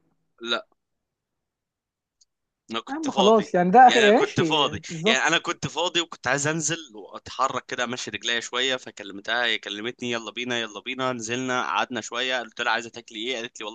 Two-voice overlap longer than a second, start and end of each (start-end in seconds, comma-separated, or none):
2.9-5.3